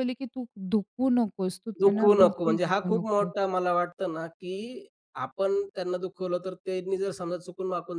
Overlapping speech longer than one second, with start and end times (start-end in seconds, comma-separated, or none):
1.8-3.3